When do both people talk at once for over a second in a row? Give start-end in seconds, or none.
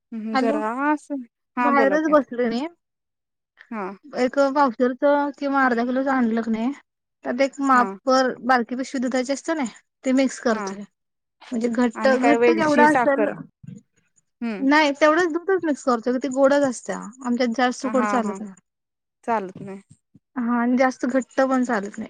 12.0-13.3